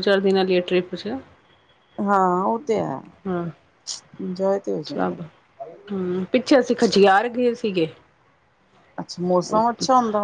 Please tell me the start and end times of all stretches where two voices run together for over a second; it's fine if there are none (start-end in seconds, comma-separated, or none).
none